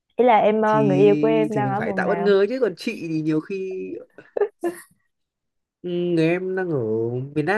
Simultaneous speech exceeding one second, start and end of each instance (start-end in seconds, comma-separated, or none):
0.7-2.3